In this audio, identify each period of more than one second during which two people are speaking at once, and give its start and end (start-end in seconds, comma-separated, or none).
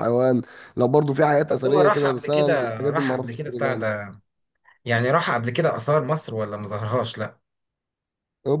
1.5-3.9